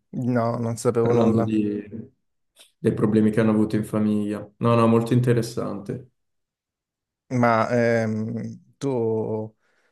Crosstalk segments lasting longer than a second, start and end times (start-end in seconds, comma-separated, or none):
none